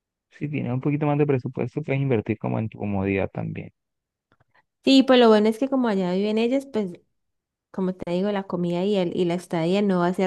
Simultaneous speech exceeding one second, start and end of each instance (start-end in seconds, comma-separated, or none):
none